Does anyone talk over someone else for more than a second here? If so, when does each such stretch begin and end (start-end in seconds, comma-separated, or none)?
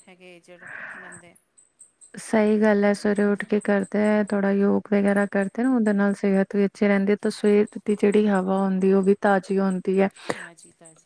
none